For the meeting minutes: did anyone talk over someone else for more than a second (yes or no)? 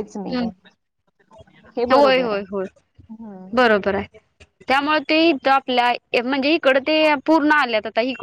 no